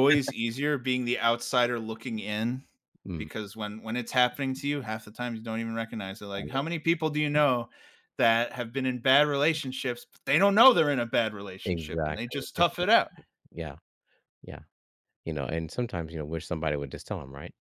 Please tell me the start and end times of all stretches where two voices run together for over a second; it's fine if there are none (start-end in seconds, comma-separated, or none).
11.7-12.9